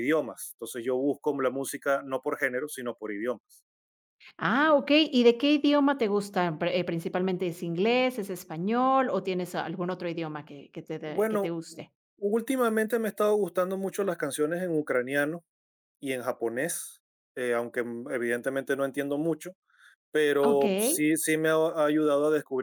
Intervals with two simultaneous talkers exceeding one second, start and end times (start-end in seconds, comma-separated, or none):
none